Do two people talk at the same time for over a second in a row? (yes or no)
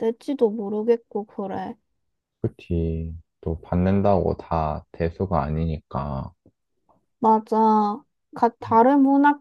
no